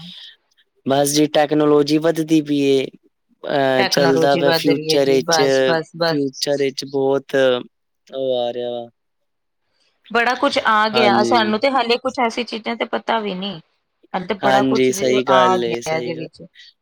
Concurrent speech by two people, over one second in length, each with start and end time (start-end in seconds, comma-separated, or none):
3.8-5.4, 14.4-16.3